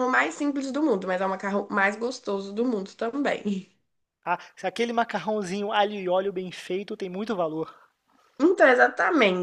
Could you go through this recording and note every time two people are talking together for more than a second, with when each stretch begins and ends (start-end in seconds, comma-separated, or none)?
none